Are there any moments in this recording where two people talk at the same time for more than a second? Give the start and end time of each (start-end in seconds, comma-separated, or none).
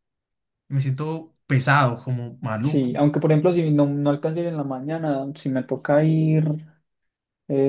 none